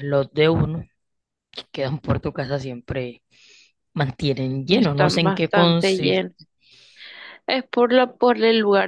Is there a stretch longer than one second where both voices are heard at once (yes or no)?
yes